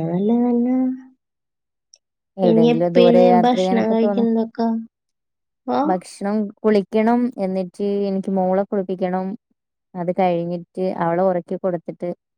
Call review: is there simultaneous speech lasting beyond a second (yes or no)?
yes